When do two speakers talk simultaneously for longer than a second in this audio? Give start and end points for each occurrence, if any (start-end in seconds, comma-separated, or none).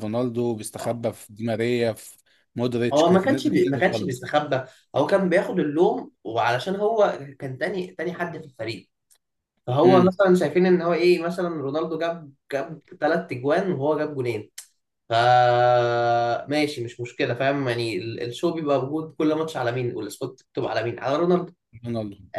2.9-4.2